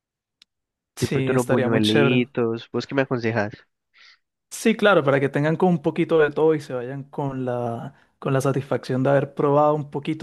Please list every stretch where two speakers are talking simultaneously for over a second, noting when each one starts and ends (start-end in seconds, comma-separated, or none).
1.0-2.2